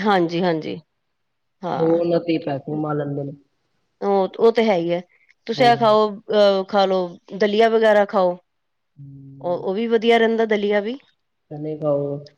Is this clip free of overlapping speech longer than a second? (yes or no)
yes